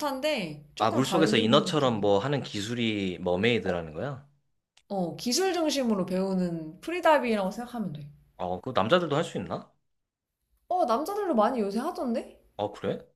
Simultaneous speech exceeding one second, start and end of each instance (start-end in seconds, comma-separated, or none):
0.8-2.0